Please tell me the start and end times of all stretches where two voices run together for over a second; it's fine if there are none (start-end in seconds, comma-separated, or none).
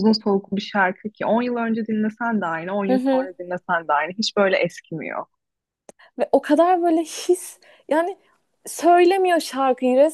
none